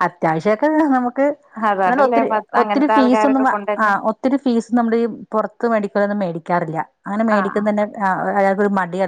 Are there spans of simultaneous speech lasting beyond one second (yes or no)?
yes